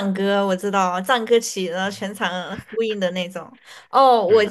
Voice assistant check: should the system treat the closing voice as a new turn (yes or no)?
no